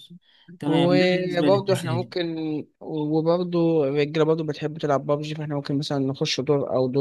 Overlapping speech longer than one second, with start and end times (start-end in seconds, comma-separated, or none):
0.7-2.1